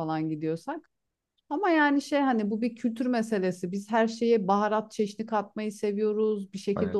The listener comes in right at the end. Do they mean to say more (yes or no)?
no